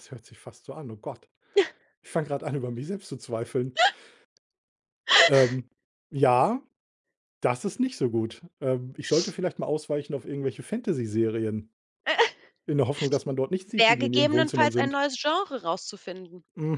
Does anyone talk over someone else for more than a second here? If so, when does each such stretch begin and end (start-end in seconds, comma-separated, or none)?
13.8-15.0